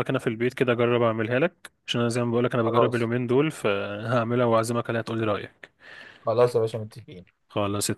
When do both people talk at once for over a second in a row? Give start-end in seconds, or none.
none